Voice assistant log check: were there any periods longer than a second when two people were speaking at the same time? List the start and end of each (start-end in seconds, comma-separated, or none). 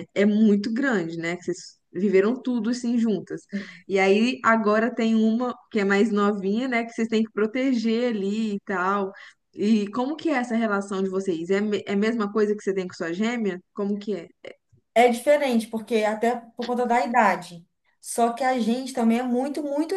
none